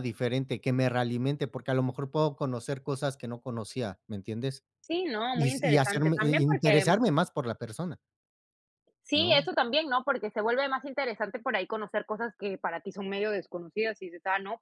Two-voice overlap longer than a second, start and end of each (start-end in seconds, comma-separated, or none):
5.3-6.8